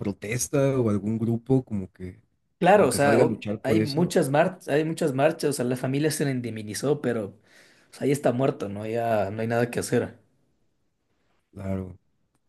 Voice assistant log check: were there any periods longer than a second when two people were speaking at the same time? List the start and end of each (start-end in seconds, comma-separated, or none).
2.7-4.1